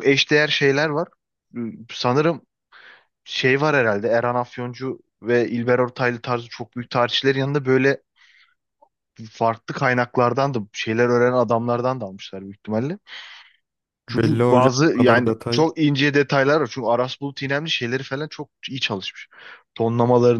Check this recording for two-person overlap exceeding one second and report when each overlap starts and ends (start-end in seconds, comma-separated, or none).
14.1-15.7